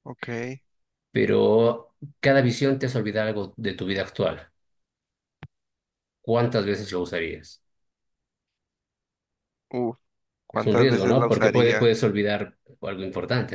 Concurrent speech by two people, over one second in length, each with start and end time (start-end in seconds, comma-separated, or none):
10.5-11.9